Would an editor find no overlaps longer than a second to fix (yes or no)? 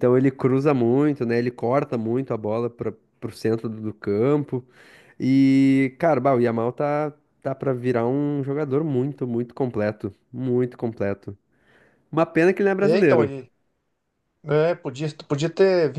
yes